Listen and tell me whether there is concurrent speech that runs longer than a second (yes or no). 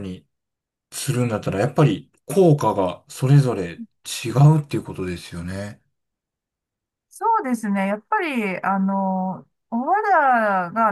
no